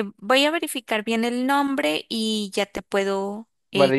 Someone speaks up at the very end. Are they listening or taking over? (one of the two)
taking over